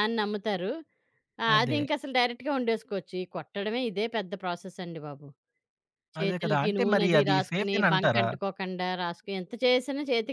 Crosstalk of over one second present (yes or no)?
yes